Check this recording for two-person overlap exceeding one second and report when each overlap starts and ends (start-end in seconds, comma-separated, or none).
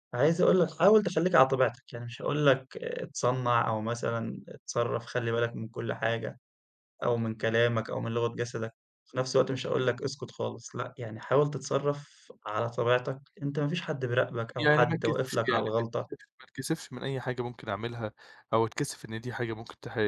14.6-16.1